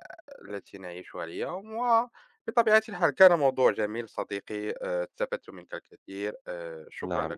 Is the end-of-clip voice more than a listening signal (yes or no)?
yes